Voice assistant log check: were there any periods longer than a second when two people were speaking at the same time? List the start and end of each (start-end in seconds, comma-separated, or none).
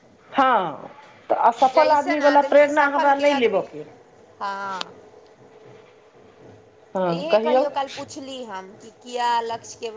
1.7-3.6